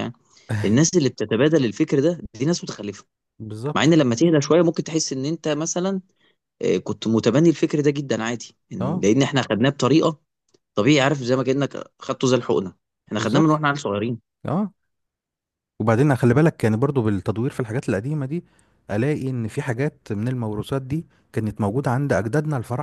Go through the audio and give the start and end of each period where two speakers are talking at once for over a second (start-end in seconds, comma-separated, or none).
none